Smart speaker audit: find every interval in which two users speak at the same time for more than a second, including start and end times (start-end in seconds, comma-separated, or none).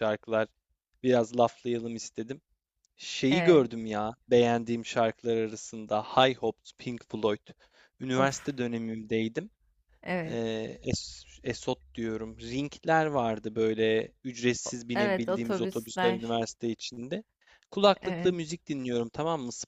14.7-16.4